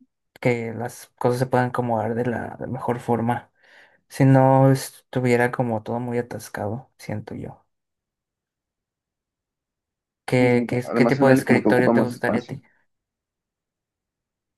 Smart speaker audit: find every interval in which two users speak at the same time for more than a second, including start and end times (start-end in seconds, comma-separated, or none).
10.4-12.6